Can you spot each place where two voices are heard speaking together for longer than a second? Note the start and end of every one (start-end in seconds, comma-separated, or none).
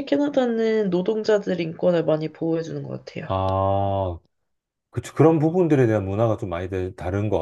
none